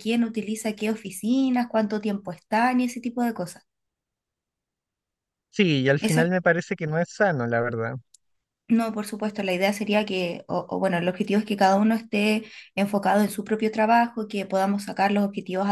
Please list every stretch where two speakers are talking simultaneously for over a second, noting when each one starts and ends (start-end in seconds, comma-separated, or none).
none